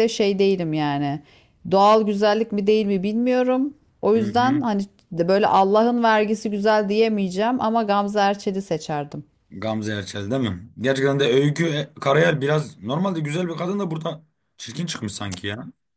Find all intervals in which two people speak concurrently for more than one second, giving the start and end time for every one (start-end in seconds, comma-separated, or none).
none